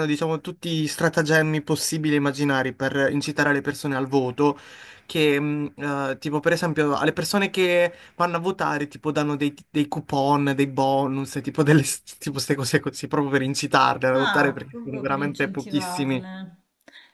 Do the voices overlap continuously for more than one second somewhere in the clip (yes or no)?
yes